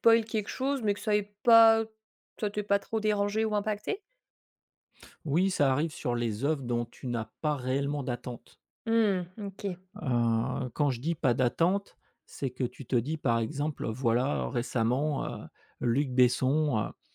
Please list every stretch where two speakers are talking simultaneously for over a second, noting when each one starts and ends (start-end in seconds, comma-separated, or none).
none